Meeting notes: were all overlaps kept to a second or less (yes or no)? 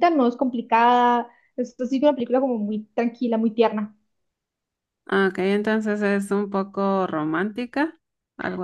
yes